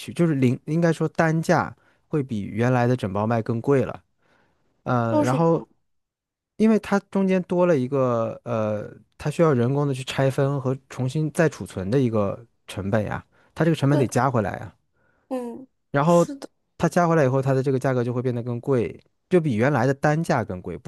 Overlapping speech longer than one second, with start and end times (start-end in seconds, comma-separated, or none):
none